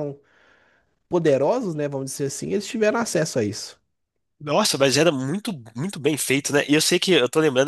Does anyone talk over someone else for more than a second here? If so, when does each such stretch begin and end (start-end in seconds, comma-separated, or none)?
none